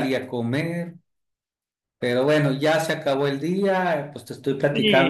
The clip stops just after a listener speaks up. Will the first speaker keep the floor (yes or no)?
no